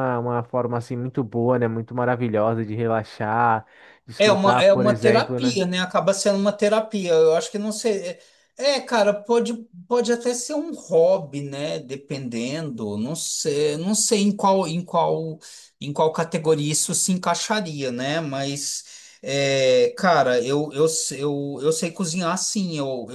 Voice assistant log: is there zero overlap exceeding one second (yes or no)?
no